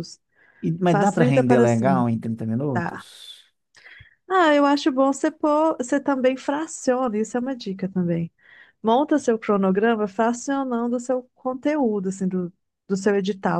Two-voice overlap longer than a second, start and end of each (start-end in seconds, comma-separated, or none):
0.8-2.1